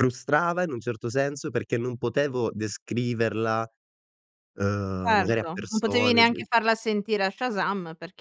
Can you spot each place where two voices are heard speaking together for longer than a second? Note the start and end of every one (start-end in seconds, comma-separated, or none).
5.0-6.3